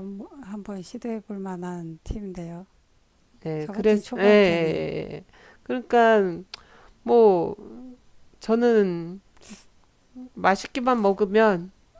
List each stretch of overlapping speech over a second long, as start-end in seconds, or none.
3.6-4.8